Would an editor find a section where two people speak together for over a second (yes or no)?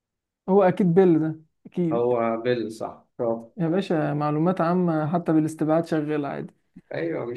no